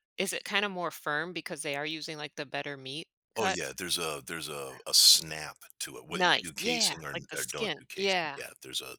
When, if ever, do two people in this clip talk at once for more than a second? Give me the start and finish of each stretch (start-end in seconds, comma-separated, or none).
6.1-8.4